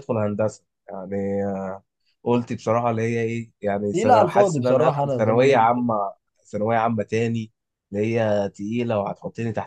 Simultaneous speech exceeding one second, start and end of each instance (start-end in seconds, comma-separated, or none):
3.9-5.8